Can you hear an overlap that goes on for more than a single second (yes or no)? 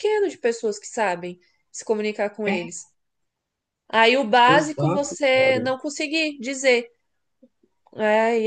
yes